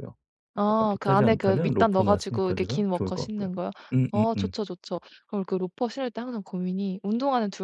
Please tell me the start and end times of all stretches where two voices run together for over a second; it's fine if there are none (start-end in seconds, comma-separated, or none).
0.7-3.5